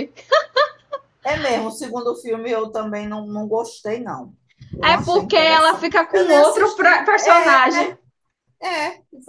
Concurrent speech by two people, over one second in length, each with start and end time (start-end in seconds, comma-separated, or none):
4.8-7.6